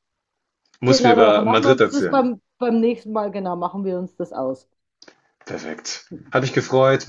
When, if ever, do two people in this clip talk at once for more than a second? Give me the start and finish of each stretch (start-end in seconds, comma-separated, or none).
0.8-2.3